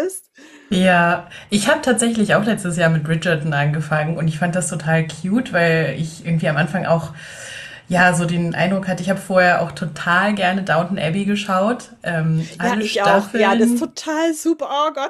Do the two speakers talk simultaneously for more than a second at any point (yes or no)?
yes